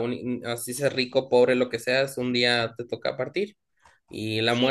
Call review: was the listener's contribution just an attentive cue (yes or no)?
no